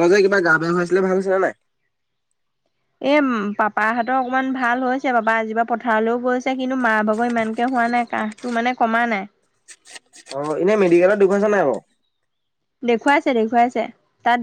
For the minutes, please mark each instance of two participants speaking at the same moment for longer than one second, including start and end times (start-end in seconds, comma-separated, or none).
none